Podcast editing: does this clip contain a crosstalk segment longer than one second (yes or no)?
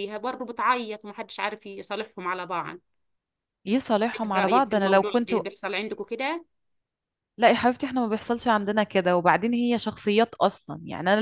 yes